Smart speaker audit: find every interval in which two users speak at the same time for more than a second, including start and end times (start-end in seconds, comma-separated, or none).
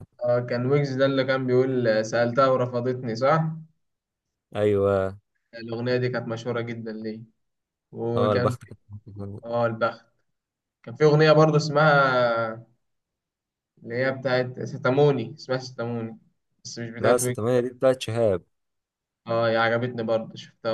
none